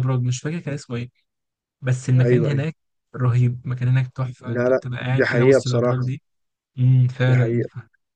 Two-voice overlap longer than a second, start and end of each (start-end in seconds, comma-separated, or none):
4.5-6.1